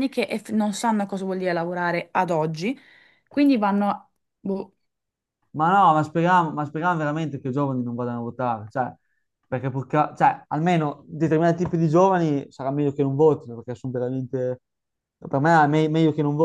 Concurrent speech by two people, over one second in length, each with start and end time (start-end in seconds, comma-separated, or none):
none